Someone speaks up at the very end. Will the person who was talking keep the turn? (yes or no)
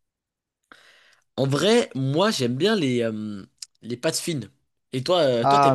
no